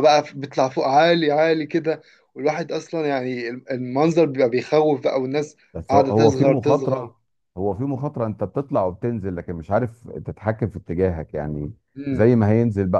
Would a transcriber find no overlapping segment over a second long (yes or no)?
no